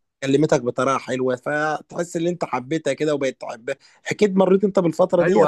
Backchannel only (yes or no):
no